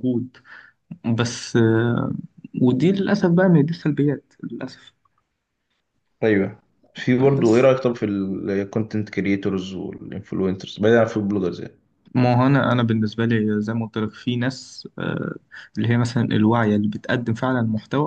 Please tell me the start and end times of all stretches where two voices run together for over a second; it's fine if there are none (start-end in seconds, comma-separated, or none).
none